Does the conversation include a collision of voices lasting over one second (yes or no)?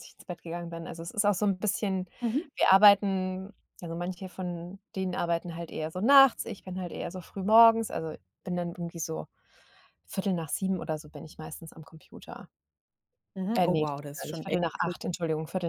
yes